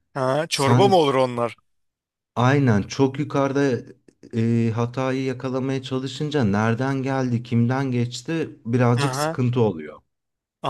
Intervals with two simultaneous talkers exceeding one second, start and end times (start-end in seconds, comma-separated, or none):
none